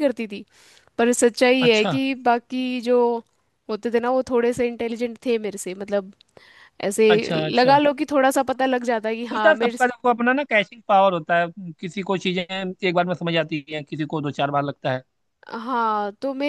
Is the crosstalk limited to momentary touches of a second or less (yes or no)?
yes